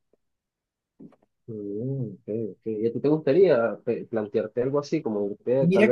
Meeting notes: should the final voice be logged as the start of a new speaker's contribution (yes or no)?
yes